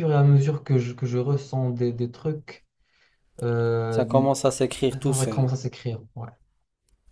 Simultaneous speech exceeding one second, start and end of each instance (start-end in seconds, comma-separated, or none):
none